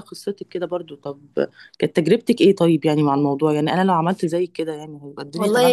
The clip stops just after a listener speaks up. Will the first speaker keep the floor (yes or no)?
no